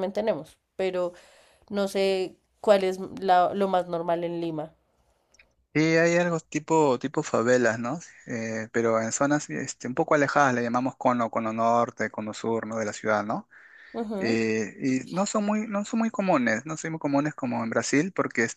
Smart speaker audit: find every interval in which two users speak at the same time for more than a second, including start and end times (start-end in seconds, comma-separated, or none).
none